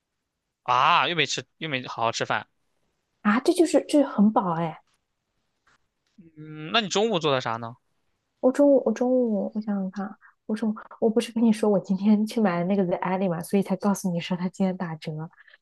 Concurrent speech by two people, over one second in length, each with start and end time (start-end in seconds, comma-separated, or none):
none